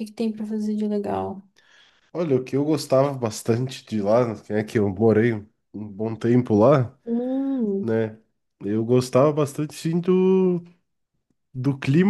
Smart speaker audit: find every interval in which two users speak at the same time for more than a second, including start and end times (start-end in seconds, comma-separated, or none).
none